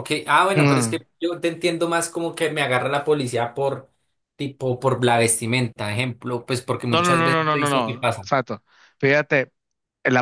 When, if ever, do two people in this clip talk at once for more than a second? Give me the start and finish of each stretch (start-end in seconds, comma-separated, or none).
6.9-8.3